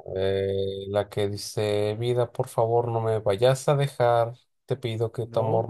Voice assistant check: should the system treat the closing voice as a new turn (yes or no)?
no